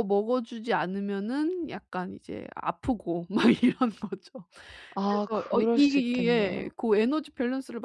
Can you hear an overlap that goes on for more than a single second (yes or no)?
yes